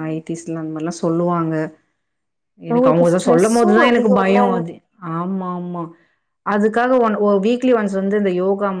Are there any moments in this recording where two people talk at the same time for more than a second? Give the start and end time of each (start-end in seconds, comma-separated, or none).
2.7-4.4